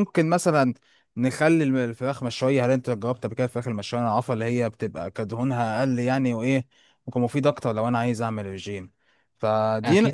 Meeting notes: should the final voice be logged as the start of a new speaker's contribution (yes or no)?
yes